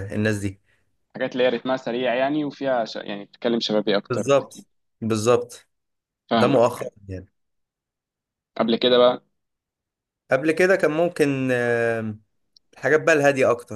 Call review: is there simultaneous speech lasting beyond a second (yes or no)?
no